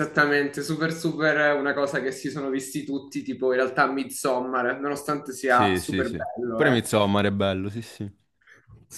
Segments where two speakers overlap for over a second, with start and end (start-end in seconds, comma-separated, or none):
5.5-6.8